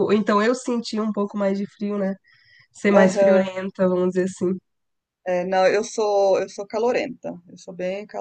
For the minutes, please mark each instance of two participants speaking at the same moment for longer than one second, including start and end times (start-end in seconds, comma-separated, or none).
none